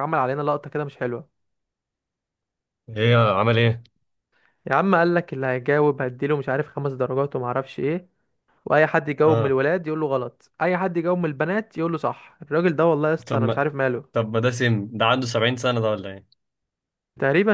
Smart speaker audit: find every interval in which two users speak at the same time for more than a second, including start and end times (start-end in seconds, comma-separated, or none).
none